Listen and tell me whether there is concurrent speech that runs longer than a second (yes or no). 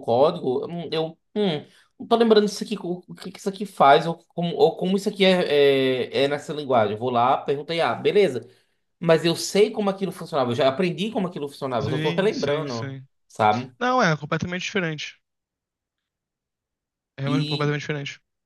yes